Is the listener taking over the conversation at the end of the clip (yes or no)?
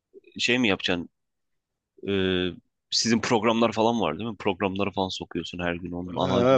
yes